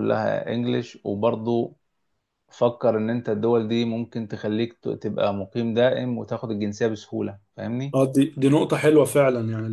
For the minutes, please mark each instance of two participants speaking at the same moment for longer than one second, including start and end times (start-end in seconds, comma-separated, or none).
none